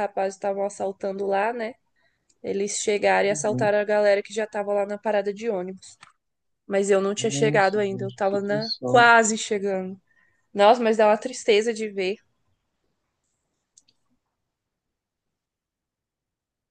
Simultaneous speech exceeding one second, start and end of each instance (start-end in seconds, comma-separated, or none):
7.2-9.1